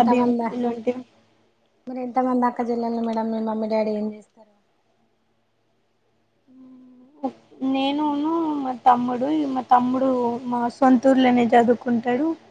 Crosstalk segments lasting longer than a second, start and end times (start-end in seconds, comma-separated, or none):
none